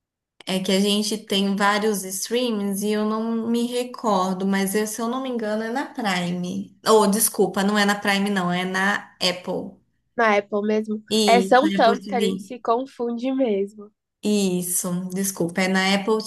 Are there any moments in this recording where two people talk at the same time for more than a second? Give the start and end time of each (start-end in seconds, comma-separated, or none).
11.1-12.5